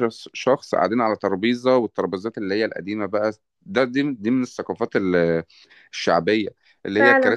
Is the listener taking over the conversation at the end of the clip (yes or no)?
no